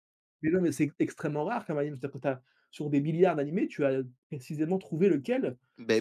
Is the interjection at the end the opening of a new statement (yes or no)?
yes